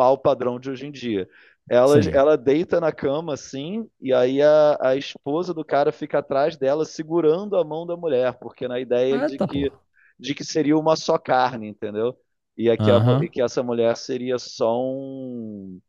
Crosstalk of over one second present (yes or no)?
no